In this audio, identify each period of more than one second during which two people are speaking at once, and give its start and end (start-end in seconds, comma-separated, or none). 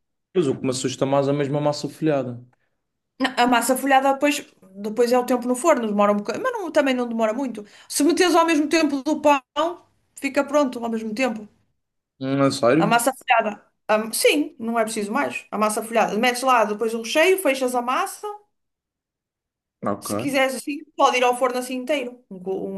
none